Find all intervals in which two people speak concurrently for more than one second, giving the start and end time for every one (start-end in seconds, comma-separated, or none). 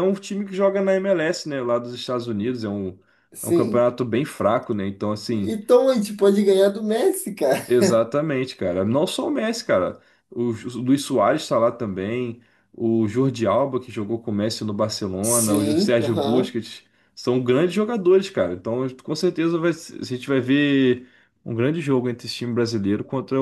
15.2-16.6